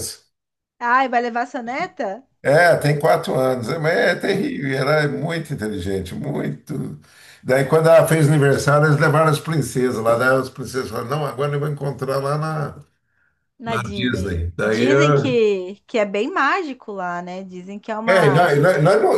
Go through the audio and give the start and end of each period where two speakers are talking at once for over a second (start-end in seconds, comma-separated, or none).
13.6-15.4